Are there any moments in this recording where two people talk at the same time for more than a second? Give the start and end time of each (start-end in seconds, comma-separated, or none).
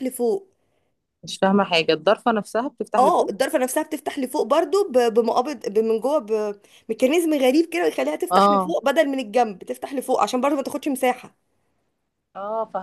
none